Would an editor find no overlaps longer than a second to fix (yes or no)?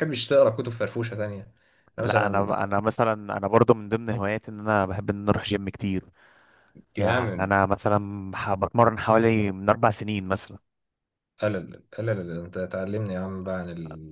yes